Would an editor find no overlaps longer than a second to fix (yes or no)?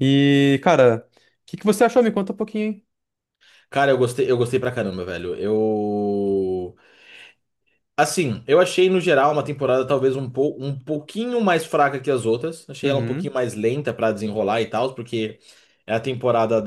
yes